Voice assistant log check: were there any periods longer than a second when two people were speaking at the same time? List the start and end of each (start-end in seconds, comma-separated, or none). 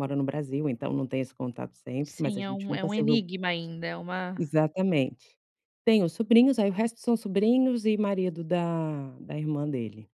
2.0-3.3